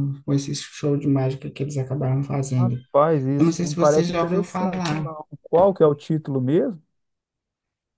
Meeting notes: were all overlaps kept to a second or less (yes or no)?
no